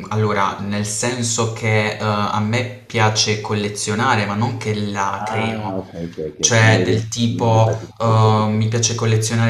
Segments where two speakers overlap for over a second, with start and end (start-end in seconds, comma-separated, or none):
6.4-8.7